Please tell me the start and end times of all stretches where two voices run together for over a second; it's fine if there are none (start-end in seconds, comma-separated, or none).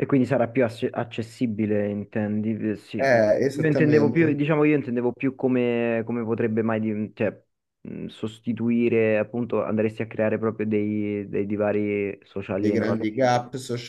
3.0-4.4